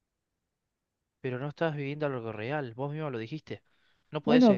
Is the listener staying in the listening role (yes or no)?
no